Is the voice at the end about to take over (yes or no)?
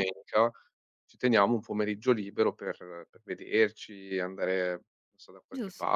yes